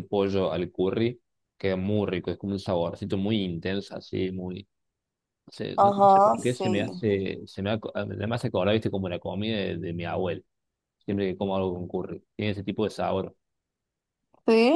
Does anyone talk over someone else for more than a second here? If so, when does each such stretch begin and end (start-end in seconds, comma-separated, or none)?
5.8-7.0